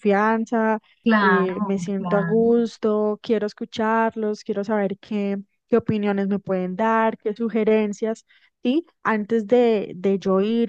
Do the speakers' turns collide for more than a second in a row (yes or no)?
yes